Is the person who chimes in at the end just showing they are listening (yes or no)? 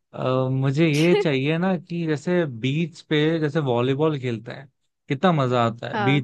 yes